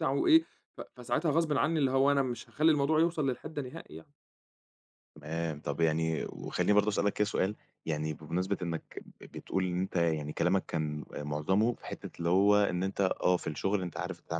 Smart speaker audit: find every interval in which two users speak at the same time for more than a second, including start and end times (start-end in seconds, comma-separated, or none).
none